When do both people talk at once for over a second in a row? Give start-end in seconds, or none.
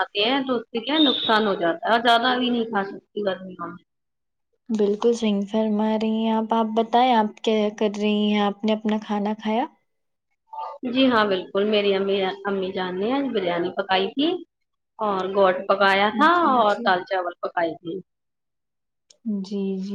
none